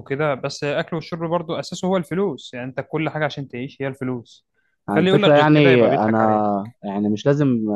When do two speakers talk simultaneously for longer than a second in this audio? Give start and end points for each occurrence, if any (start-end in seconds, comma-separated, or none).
4.9-6.5